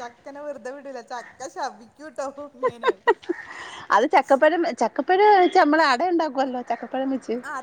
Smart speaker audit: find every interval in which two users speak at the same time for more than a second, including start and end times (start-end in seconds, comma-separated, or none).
none